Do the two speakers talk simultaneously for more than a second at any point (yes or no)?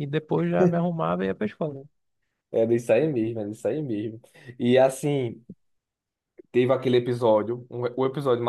no